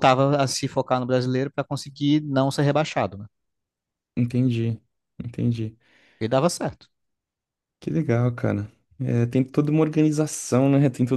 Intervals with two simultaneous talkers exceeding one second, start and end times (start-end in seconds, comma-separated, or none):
none